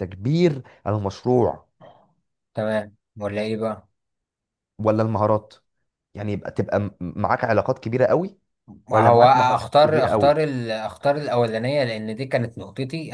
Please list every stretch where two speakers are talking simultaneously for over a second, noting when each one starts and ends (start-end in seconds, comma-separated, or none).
8.9-10.4